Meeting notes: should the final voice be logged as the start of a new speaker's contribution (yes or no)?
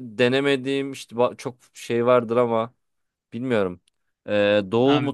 no